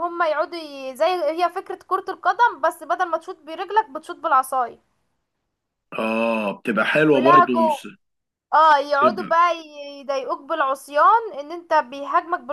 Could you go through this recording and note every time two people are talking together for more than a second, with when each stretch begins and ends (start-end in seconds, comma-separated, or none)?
none